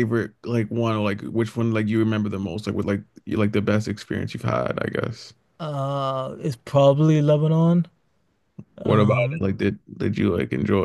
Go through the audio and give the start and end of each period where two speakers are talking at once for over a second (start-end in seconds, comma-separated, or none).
none